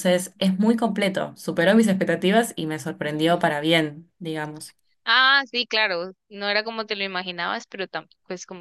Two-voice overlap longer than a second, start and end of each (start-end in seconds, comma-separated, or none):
none